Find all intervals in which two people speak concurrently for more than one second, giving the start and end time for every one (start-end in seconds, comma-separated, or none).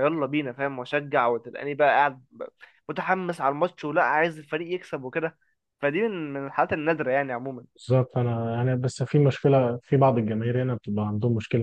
none